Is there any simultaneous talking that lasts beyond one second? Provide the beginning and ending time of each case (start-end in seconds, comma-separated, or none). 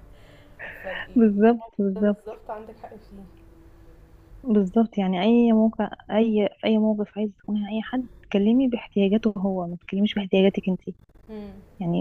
1.1-2.4